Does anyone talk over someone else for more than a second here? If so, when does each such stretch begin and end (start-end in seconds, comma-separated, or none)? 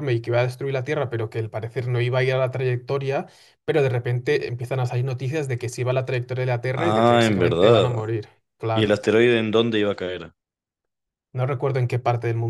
6.7-8.1